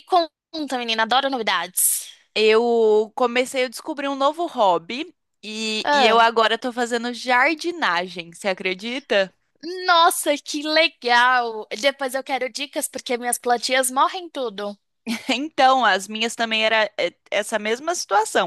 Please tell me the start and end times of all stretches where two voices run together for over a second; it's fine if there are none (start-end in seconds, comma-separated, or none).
none